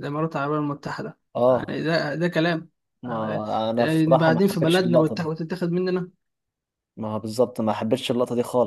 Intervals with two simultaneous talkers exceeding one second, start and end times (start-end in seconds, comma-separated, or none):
3.1-5.3